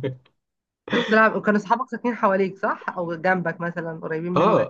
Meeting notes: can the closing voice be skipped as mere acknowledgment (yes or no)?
no